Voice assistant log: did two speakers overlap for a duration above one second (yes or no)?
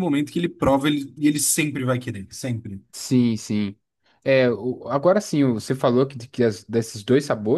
no